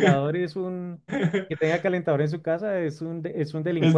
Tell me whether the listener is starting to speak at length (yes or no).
yes